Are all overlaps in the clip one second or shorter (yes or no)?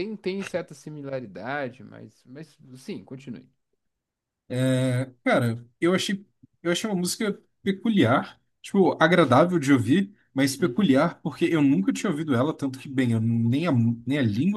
yes